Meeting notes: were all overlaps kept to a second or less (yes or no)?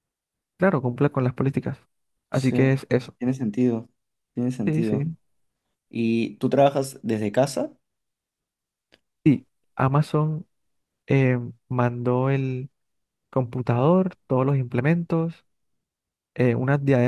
yes